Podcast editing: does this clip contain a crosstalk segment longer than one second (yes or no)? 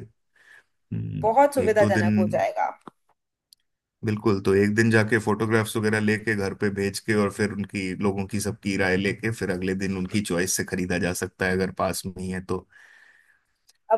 yes